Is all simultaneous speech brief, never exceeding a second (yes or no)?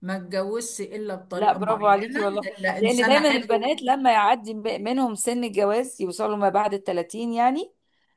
no